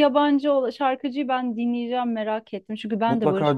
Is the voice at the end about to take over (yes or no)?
yes